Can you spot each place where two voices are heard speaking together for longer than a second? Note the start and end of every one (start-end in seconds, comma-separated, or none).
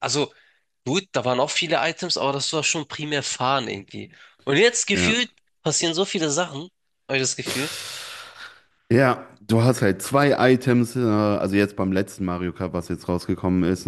none